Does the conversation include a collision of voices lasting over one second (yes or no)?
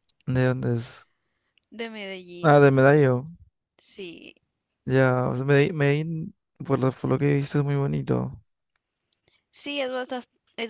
no